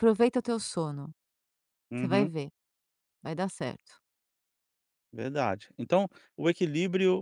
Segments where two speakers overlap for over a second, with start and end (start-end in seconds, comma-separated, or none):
none